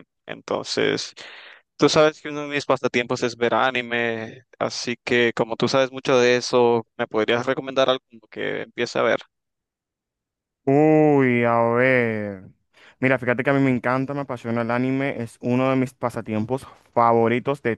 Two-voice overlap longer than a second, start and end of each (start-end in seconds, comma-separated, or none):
none